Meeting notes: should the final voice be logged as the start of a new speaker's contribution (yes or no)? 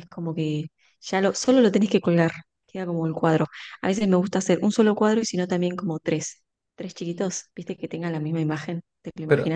yes